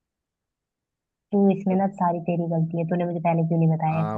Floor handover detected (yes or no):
yes